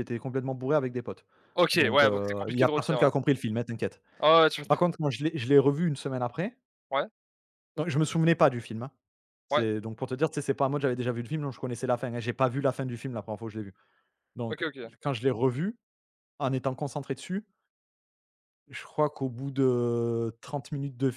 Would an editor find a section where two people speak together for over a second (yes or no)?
yes